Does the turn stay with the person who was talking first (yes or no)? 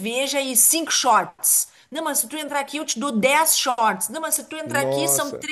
yes